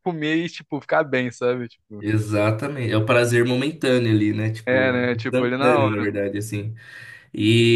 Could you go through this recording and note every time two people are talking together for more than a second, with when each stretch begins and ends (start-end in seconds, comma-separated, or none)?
4.7-6.1